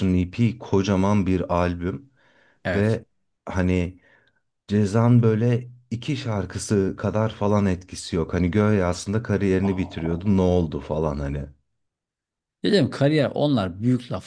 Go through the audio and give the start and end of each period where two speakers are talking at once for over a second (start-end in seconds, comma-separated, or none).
none